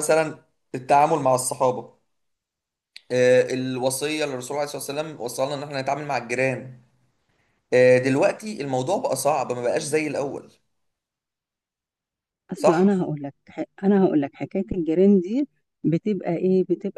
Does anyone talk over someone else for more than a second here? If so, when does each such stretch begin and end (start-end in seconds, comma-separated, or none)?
none